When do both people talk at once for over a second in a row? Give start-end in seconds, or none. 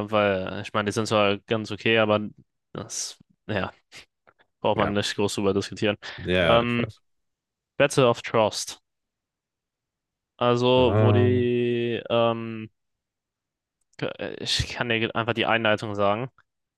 none